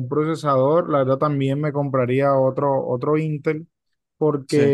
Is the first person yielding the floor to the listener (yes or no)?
no